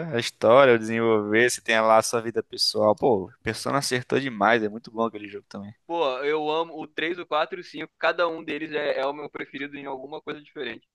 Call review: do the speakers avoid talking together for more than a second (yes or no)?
yes